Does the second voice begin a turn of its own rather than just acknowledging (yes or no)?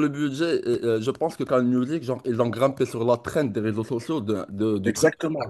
yes